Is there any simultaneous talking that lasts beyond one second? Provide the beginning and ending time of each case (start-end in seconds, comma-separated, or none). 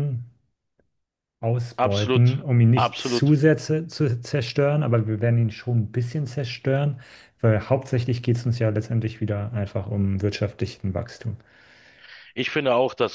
1.8-3.3